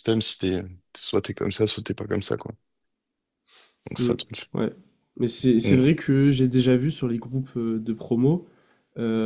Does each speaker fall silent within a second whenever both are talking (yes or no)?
yes